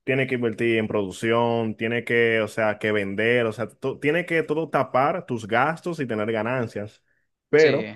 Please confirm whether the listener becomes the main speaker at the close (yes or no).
no